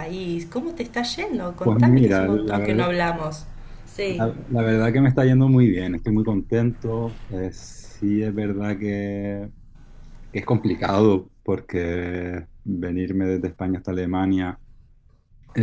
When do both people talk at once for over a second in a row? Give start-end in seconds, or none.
1.6-2.9